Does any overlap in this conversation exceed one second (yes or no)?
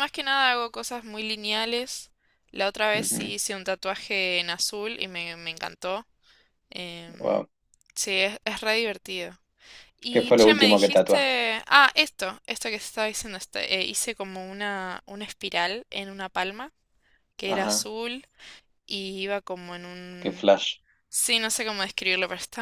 yes